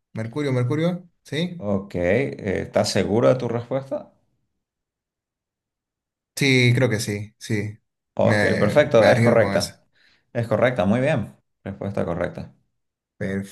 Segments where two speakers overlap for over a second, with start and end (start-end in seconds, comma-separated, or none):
8.2-9.7